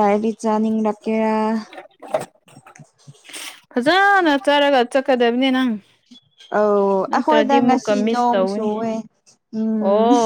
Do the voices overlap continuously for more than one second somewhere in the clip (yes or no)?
yes